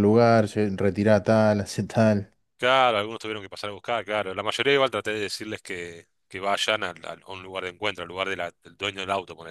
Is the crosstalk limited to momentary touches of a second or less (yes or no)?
yes